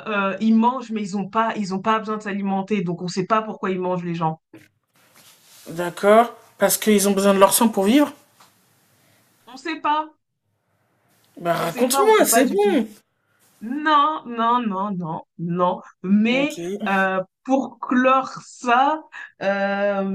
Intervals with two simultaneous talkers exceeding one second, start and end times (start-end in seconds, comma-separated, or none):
11.6-12.8